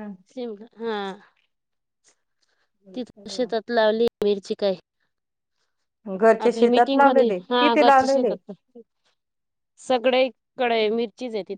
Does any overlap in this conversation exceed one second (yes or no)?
yes